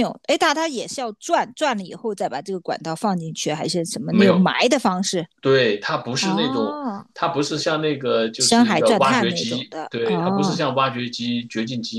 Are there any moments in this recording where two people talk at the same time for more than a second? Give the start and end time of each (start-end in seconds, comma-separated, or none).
8.4-10.7